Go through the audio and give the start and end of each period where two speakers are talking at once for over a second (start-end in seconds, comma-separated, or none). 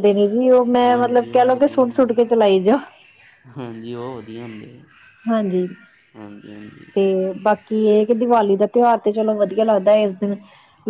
0.8-2.1